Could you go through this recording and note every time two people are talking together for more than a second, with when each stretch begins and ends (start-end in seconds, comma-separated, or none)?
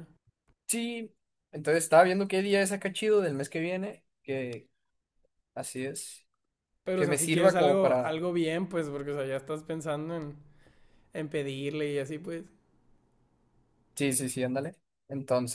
6.9-8.2